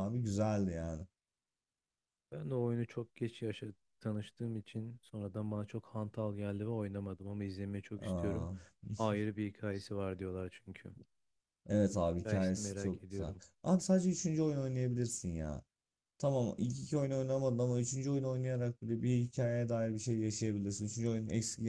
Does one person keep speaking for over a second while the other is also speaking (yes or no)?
yes